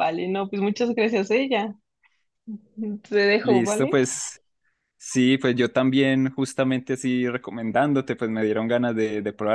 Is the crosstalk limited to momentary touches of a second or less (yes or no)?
yes